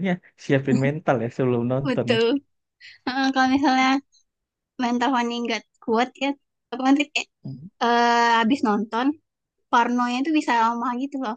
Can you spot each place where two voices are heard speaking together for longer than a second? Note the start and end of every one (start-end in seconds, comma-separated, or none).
none